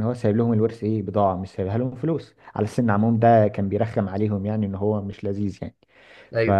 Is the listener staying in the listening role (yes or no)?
yes